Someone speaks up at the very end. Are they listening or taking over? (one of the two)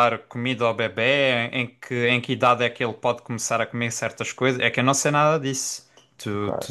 taking over